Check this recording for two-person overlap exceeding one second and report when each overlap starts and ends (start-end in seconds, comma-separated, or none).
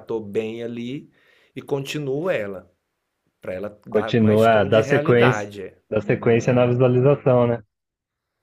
3.9-5.5